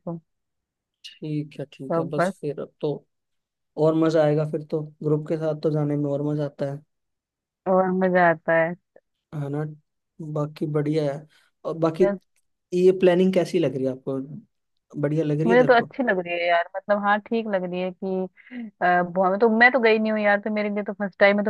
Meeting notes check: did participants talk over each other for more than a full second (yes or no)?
no